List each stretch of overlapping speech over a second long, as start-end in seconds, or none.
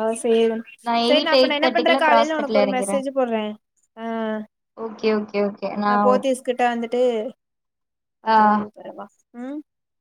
1.1-2.9